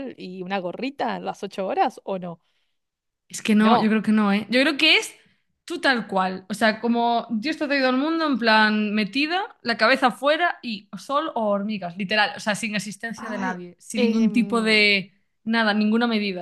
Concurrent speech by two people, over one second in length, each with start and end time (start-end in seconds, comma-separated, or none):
13.2-14.8